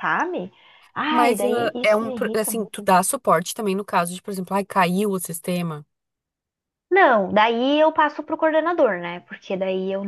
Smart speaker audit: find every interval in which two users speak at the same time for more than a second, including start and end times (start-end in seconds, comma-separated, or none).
1.1-2.5